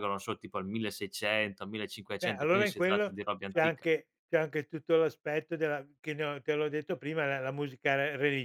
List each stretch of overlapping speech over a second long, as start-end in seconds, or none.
2.2-3.9